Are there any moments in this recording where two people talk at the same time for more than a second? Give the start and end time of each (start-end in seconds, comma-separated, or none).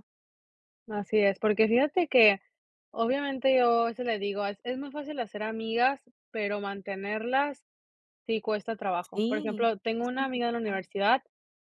9.1-10.8